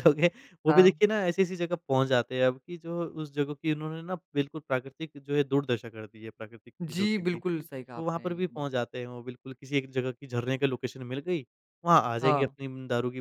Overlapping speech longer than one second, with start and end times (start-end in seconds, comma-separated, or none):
6.8-8.7